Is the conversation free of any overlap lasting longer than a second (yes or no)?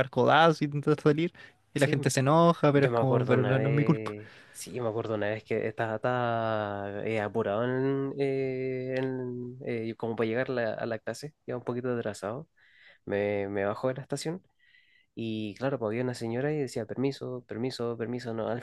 no